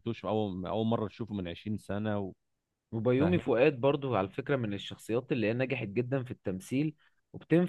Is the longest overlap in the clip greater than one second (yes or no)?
no